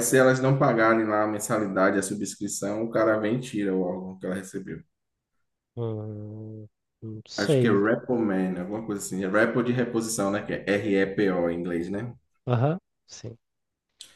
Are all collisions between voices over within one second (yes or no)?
yes